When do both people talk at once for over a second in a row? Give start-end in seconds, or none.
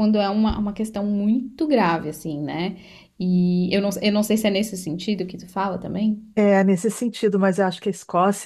none